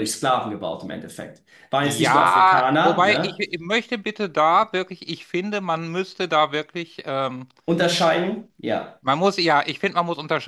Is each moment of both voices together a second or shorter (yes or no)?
no